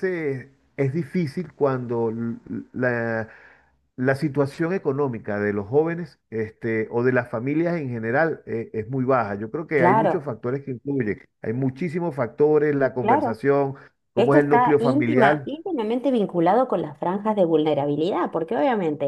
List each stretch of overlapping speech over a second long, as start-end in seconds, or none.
14.2-15.5